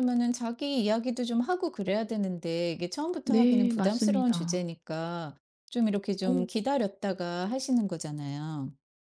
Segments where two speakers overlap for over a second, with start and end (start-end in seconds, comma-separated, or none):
3.2-4.6